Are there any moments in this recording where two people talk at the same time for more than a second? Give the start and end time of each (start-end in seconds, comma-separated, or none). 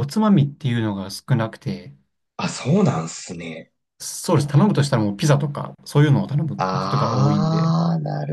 6.6-7.8